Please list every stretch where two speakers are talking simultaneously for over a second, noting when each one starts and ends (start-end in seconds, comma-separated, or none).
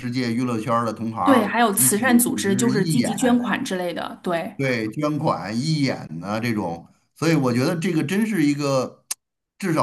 1.2-3.5